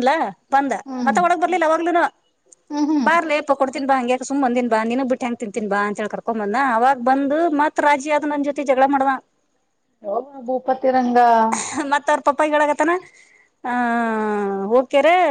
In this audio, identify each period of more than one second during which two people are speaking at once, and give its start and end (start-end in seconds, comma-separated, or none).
none